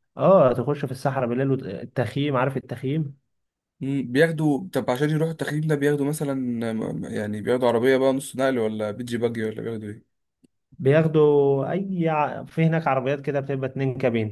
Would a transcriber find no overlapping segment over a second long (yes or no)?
yes